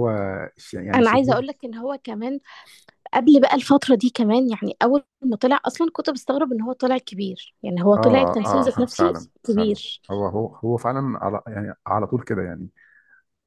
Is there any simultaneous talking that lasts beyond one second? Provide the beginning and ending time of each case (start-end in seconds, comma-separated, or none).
8.0-9.7